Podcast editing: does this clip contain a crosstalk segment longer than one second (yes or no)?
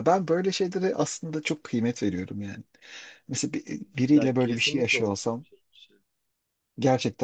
yes